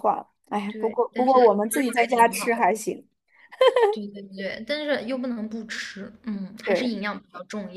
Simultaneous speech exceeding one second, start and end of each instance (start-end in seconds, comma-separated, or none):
0.7-2.6